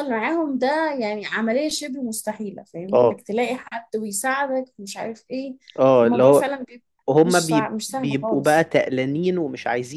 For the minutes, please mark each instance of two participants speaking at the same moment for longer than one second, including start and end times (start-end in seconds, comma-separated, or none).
7.2-8.7